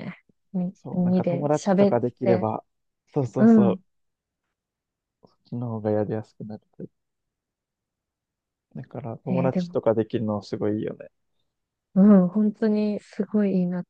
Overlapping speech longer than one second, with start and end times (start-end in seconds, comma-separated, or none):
0.7-2.5